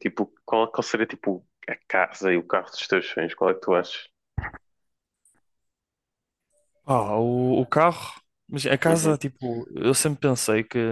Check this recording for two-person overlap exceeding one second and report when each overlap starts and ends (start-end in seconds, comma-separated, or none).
none